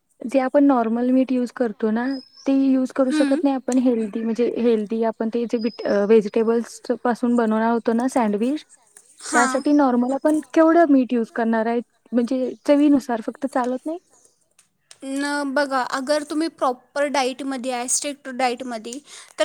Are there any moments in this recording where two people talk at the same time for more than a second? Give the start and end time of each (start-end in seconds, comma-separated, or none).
none